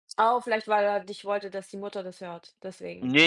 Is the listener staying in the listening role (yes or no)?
no